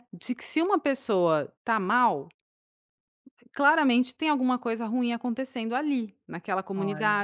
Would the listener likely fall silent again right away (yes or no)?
yes